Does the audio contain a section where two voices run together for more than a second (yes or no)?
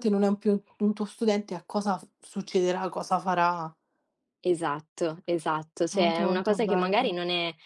yes